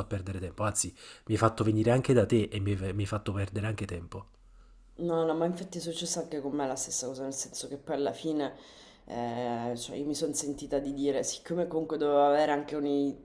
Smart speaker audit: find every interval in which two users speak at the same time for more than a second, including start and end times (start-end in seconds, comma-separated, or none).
none